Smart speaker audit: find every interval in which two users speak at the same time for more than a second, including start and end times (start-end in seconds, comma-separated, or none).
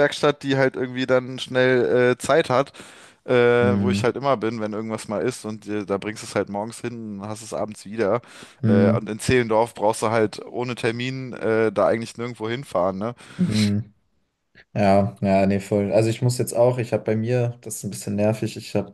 none